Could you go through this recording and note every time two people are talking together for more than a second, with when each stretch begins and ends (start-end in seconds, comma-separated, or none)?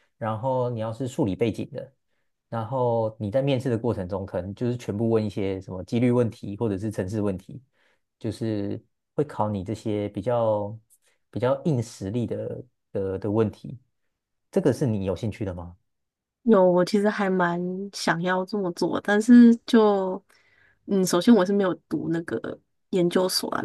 none